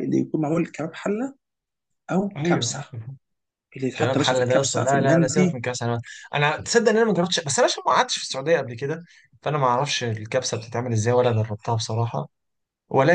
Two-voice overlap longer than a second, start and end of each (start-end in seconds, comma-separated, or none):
4.0-5.6